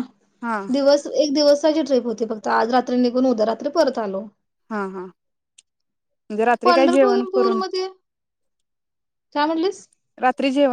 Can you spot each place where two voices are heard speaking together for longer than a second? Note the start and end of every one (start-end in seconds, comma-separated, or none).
none